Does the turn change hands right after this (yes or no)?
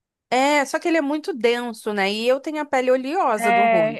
yes